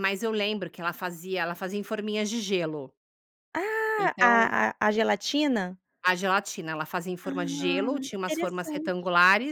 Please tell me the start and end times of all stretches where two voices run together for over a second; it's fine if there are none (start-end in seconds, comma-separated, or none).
7.2-8.9